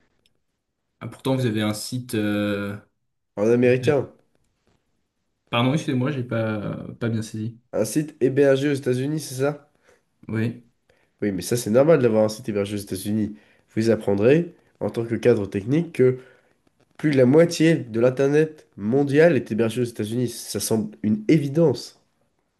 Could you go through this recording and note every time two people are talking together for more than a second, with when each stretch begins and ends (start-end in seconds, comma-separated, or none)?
none